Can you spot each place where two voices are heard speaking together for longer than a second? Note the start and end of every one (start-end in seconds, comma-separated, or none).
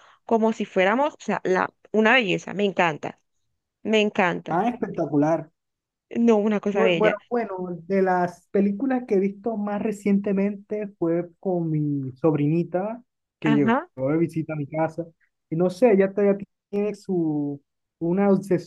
none